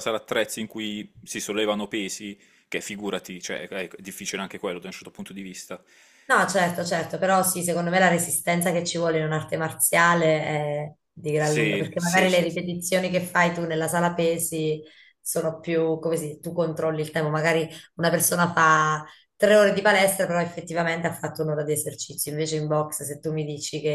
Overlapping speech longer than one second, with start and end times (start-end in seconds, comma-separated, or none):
11.4-12.6